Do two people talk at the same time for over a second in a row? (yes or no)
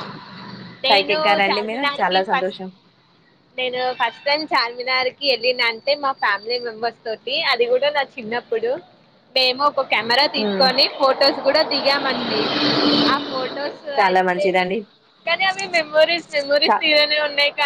yes